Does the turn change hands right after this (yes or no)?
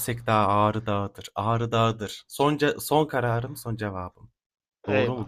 yes